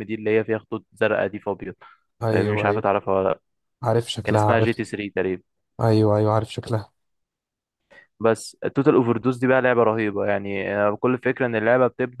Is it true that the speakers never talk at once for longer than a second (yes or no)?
yes